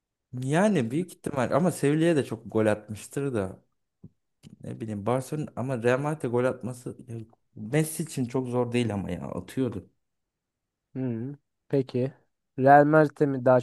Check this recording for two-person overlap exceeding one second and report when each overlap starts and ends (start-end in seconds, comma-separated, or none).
none